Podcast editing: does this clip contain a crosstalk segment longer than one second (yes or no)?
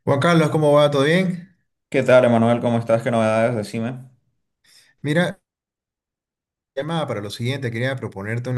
no